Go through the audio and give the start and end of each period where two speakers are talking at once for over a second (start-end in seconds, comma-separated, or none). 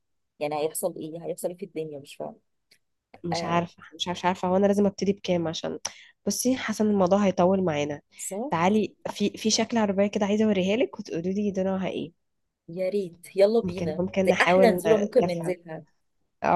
13.6-15.6